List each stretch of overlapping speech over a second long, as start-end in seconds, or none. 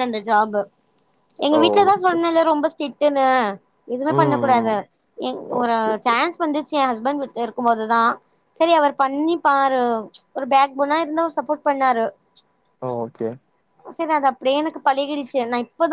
none